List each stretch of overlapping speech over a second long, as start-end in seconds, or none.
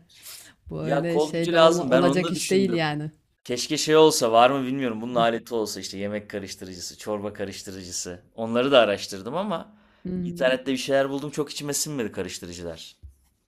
0.8-2.9